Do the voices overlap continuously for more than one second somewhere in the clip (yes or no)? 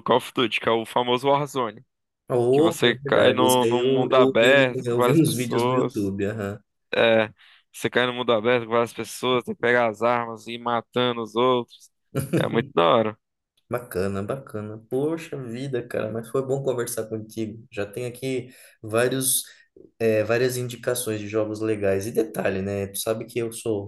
yes